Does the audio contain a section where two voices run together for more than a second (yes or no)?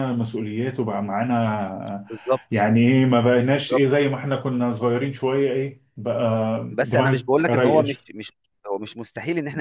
yes